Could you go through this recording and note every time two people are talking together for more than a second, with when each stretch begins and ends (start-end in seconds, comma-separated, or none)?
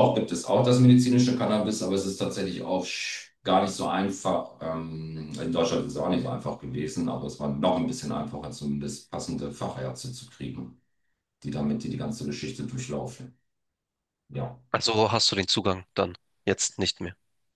none